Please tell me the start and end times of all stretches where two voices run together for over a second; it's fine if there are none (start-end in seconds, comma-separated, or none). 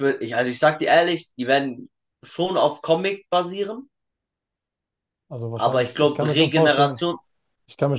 5.5-7.0